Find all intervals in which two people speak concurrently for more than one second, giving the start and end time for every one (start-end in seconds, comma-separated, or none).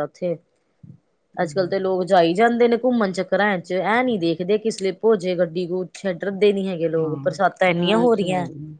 7.0-8.2